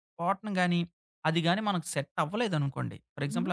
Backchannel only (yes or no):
yes